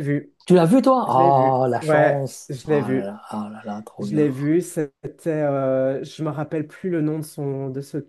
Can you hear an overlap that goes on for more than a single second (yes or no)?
yes